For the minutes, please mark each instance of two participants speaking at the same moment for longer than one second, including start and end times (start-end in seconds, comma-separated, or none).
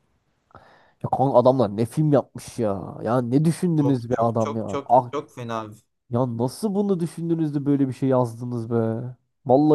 3.8-5.1